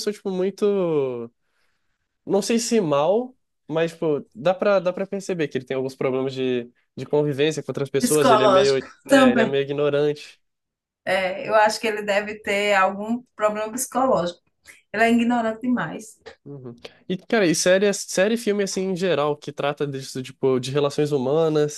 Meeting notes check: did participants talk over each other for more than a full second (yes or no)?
yes